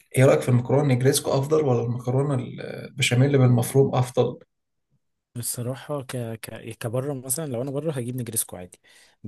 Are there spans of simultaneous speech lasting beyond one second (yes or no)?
no